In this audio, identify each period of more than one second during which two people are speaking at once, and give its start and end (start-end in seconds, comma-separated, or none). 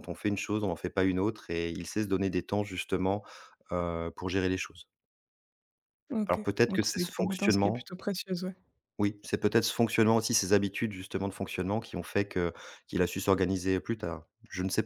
6.2-7.9